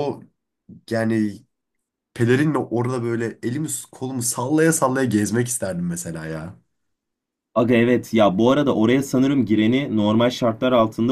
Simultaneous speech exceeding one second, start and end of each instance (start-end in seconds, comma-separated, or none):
none